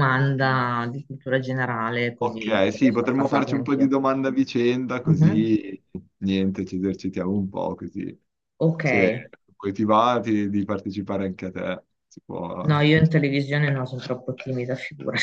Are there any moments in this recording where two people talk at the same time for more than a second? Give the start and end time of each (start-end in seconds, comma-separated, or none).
2.2-3.9